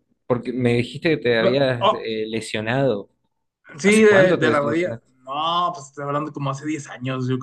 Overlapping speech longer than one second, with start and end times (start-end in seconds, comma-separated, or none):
3.8-5.1